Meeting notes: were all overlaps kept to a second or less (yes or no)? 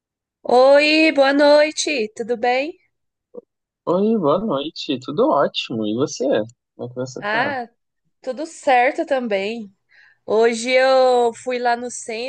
yes